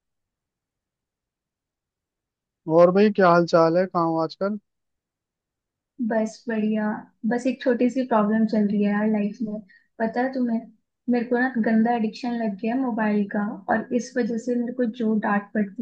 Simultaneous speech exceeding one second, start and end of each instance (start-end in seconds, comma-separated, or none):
none